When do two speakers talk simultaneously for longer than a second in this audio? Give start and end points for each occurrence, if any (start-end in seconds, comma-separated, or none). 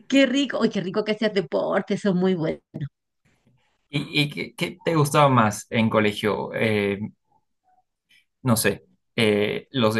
none